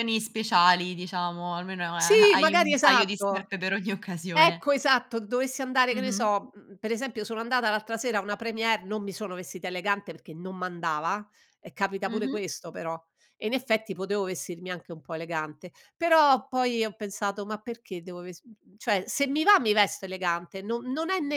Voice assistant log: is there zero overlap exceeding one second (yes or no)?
no